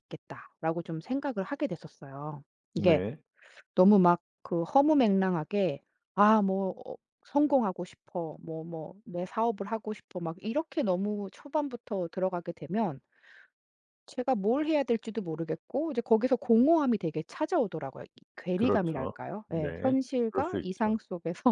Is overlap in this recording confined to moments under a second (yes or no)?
no